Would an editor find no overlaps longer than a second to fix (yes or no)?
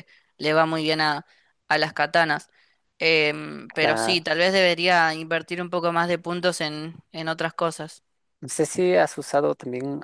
yes